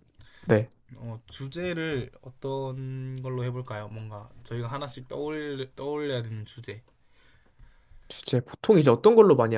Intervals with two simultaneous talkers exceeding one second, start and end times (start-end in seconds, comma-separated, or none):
none